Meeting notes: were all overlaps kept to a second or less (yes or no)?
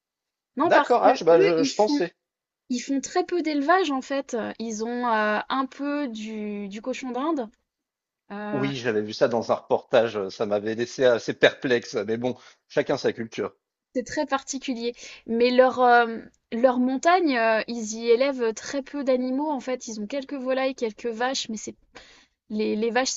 no